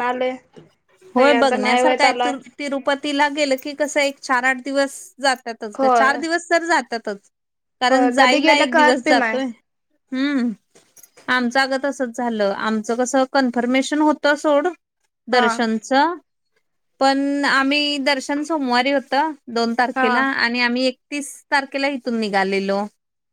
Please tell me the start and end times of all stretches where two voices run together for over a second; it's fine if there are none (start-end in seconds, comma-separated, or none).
7.9-9.4